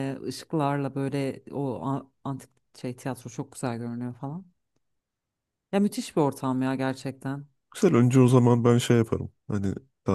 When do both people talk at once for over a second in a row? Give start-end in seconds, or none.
none